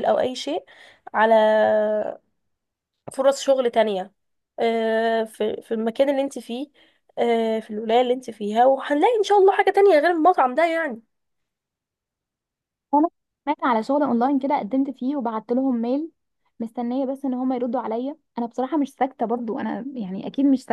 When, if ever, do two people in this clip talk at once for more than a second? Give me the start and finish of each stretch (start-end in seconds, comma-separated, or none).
none